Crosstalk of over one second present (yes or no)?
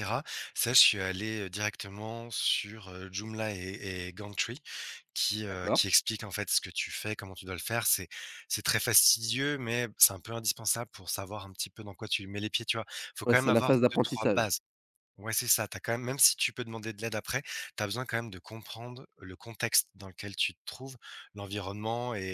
yes